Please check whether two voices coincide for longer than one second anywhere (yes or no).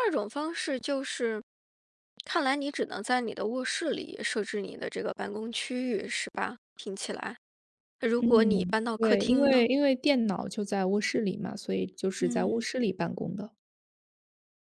yes